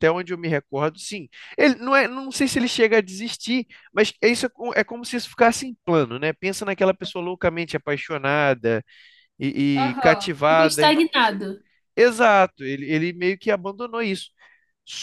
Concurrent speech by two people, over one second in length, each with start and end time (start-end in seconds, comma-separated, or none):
9.7-11.0